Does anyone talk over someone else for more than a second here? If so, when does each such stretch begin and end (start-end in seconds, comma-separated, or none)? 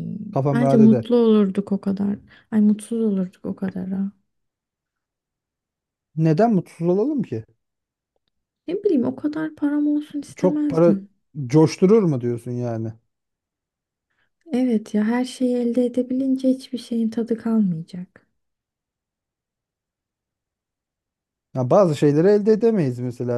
none